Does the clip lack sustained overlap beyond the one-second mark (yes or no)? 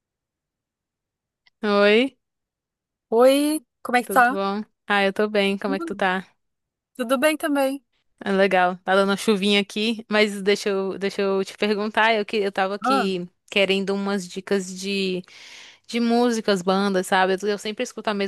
yes